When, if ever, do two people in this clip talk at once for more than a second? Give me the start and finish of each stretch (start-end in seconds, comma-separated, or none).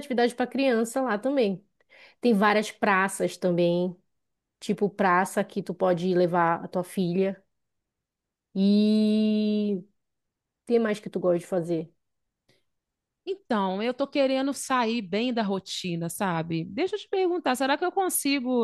none